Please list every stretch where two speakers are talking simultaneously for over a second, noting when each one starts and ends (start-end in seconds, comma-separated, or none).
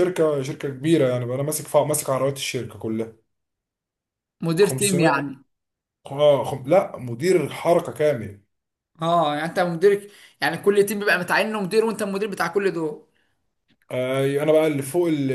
none